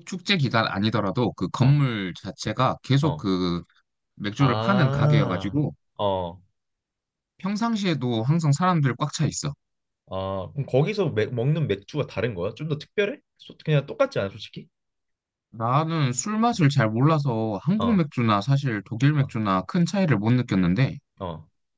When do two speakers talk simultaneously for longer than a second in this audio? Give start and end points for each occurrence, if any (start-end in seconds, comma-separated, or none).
4.4-5.6